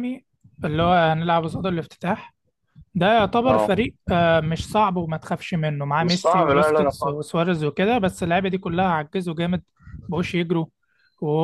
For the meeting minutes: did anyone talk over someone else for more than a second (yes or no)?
yes